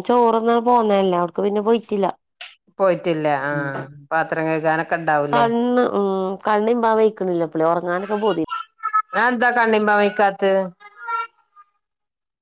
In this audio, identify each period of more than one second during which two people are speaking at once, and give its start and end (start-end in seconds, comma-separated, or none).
none